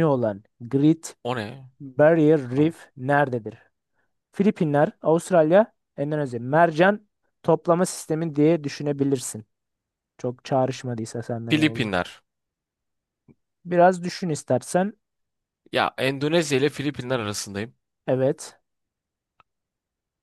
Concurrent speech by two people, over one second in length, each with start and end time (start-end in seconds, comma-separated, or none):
none